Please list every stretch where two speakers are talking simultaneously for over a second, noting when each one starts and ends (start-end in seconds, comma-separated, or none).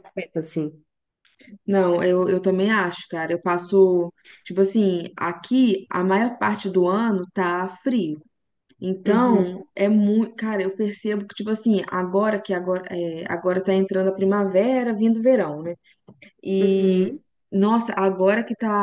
none